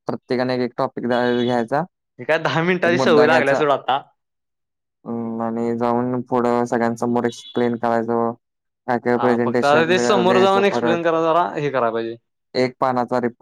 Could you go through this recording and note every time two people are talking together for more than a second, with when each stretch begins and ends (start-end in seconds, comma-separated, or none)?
9.2-11.1